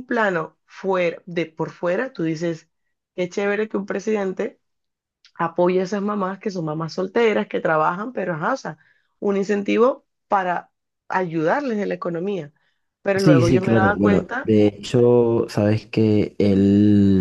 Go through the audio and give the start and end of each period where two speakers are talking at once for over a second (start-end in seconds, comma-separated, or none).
13.2-14.5